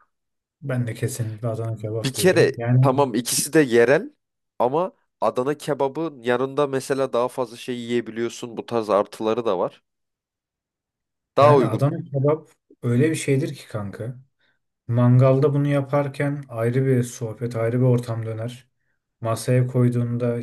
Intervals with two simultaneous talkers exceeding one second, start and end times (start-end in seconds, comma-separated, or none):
1.7-3.0